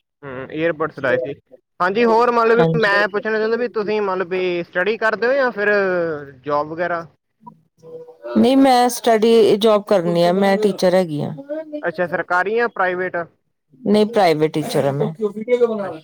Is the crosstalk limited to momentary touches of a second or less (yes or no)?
no